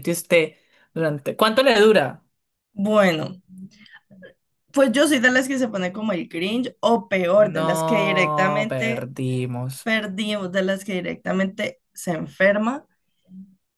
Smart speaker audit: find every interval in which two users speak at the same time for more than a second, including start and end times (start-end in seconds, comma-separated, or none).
7.3-9.1